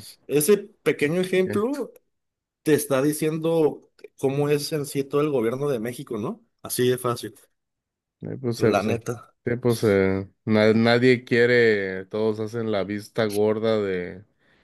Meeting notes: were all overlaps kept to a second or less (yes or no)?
yes